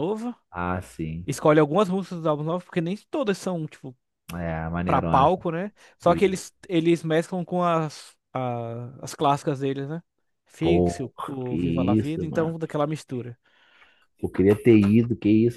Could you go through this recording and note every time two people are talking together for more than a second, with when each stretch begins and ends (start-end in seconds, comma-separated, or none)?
10.6-12.5